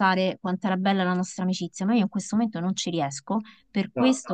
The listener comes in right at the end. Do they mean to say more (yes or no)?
no